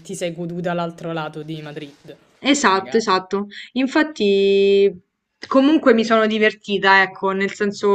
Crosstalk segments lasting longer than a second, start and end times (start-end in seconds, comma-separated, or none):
none